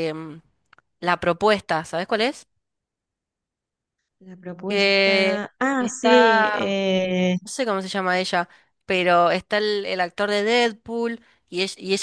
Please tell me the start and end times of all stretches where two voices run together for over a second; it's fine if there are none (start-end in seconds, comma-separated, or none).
4.7-6.7